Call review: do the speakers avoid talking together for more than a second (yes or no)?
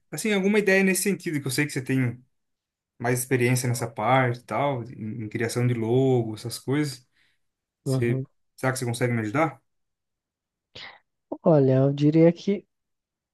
yes